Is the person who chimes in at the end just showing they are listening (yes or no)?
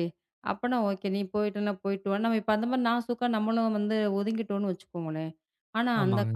yes